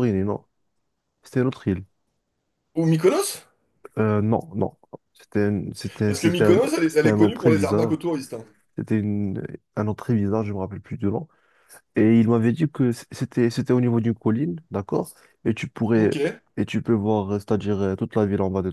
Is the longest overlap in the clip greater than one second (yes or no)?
yes